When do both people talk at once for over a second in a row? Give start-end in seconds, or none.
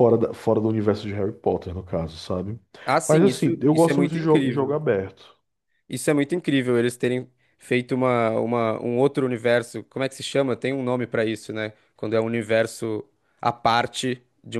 3.1-4.7